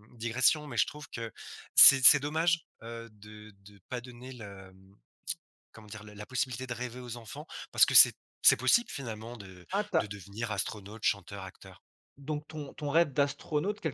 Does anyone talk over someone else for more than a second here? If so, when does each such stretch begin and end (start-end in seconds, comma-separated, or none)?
none